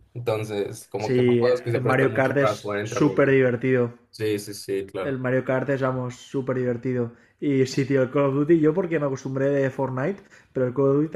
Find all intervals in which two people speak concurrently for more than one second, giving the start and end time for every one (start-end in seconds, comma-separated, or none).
1.0-3.4